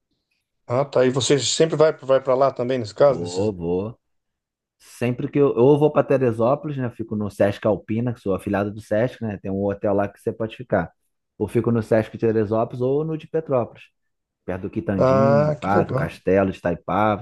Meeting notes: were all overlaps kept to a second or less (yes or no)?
no